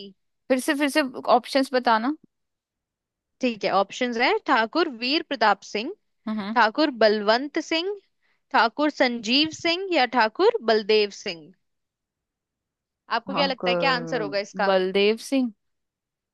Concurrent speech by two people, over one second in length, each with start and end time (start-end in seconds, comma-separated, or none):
13.3-14.7